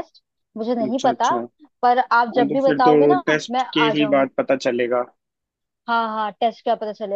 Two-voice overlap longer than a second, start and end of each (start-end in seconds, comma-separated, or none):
2.0-4.3